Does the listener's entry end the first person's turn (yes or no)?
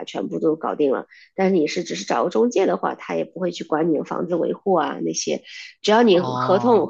no